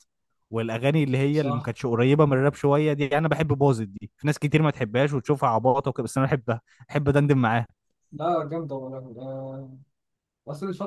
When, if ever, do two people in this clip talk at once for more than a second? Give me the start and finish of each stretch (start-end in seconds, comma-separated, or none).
none